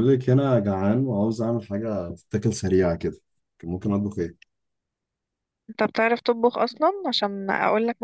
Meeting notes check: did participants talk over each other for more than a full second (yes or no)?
no